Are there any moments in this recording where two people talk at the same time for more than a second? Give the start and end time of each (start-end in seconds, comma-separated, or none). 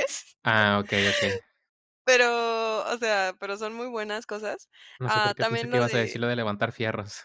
5.0-6.2